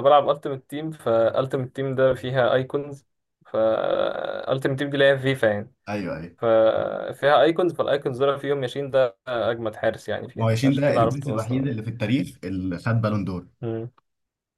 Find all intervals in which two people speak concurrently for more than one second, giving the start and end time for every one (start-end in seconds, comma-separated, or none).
10.3-11.7